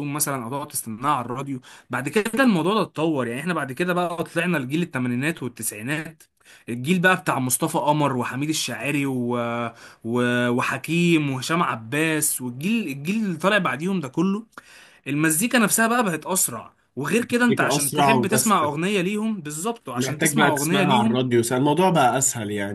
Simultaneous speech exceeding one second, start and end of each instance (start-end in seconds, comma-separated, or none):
17.3-18.6, 19.9-21.2